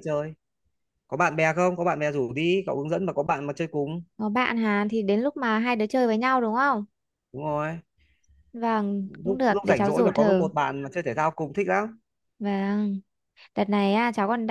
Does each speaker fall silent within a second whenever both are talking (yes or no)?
no